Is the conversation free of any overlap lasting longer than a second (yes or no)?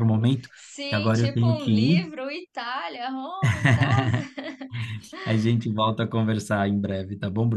no